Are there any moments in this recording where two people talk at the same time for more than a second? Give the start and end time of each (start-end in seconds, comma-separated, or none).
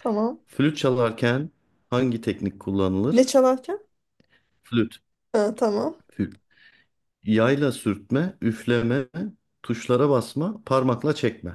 none